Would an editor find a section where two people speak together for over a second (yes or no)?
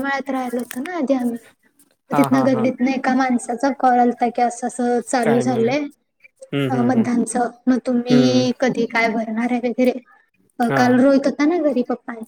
no